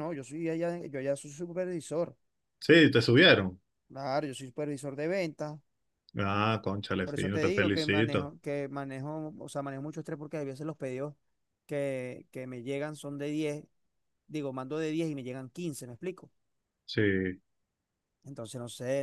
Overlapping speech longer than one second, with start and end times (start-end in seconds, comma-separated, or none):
7.0-8.3